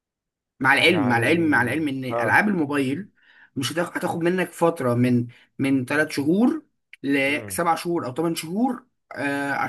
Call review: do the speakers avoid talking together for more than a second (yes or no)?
no